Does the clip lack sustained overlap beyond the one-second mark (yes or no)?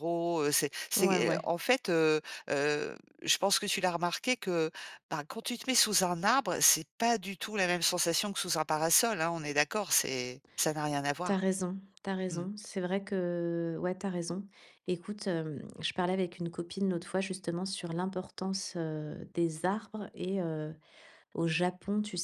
yes